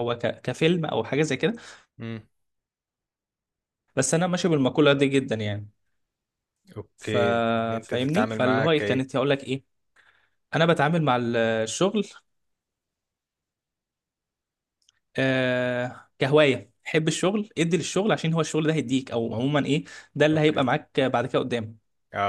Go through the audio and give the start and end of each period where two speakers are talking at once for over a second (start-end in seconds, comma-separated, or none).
7.8-9.0